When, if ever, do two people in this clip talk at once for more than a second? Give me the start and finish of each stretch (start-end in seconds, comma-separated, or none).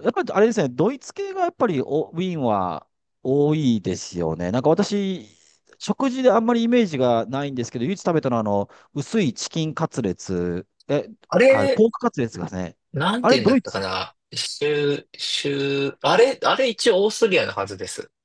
none